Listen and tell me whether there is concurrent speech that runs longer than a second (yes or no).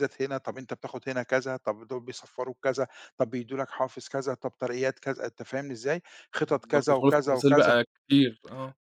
yes